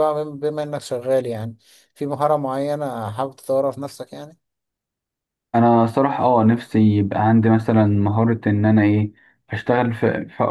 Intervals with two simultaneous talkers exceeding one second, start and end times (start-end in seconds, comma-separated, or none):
none